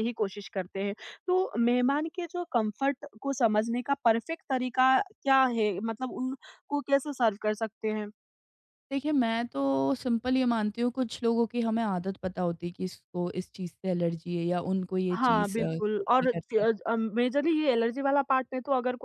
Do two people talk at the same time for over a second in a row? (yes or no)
yes